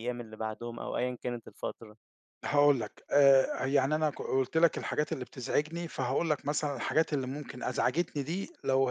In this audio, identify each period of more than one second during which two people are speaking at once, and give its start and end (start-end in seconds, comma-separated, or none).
none